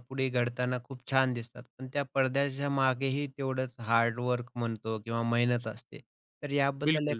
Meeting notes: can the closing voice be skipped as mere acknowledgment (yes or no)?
yes